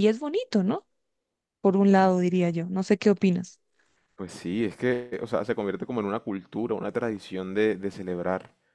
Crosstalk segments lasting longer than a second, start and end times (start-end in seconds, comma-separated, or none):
none